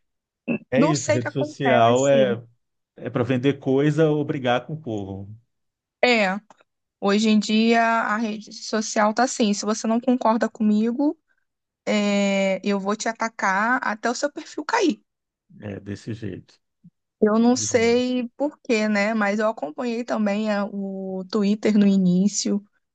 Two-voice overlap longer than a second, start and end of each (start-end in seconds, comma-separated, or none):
0.8-2.3